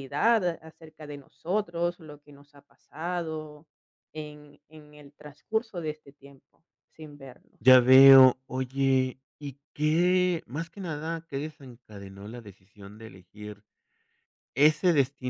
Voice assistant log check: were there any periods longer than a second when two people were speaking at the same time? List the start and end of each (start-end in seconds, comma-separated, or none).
none